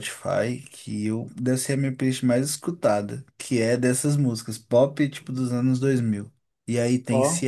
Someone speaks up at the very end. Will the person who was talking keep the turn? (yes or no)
yes